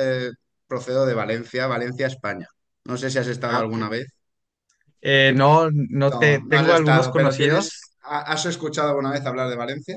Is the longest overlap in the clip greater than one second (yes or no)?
yes